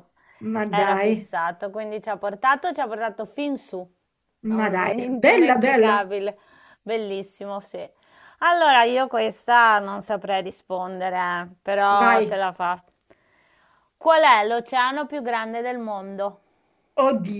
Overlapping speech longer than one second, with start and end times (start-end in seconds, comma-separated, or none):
4.5-6.0